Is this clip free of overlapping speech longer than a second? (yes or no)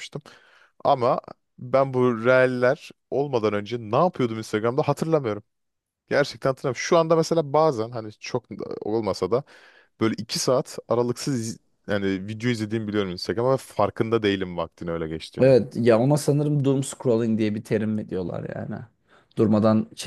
yes